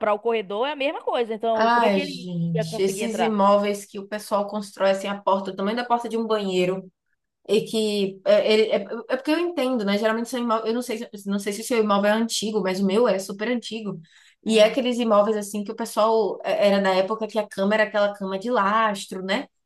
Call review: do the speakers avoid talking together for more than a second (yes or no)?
no